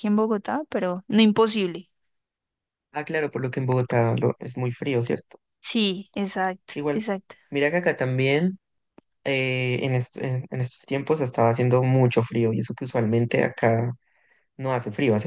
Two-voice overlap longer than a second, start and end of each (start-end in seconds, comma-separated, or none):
none